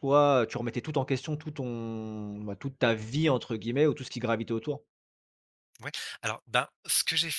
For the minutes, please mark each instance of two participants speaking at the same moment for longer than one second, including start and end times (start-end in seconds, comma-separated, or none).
none